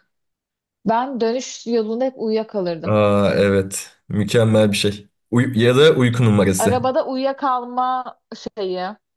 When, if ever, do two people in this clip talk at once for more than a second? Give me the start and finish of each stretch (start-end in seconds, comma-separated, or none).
none